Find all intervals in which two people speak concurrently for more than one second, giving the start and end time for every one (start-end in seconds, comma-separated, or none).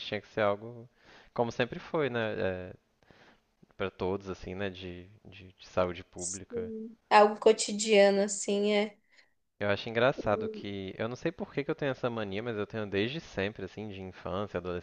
none